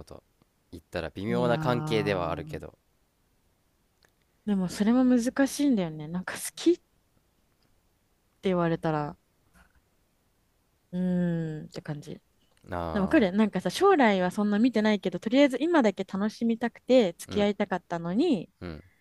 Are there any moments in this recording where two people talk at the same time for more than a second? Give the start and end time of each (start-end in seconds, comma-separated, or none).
1.3-2.6